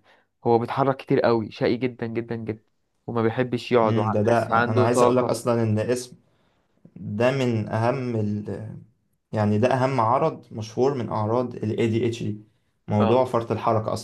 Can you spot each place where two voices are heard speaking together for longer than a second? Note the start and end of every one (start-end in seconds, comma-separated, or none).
3.8-5.4